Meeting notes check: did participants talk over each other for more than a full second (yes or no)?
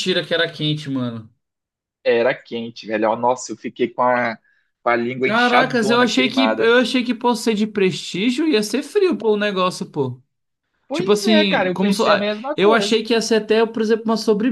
yes